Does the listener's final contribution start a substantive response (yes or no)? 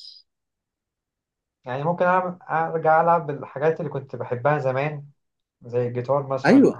yes